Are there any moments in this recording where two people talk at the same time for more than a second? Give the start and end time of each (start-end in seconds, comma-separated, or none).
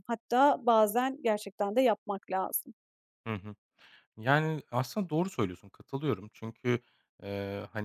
none